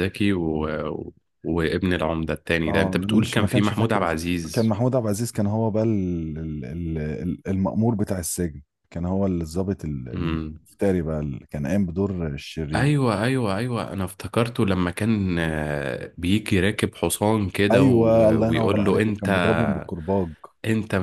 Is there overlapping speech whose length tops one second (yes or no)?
yes